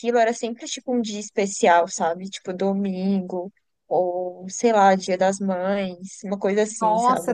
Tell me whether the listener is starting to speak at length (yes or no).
yes